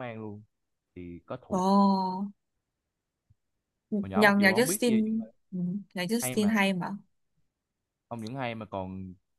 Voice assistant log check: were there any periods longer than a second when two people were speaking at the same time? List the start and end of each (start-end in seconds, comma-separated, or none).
4.0-5.2